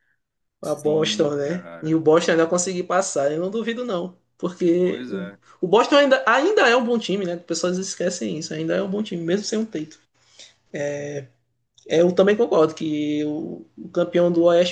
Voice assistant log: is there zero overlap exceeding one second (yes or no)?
no